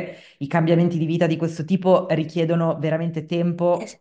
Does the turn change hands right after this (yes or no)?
yes